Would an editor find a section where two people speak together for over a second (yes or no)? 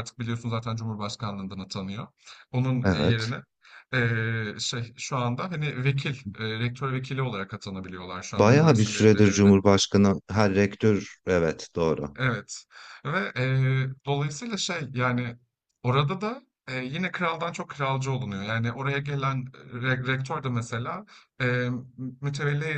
yes